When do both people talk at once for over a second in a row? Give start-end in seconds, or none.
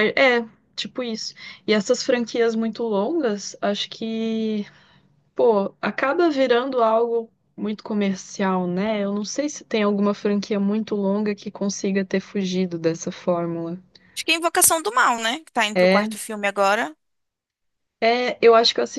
none